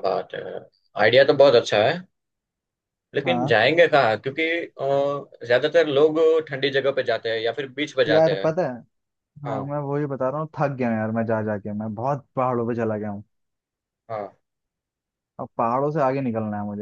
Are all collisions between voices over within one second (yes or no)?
yes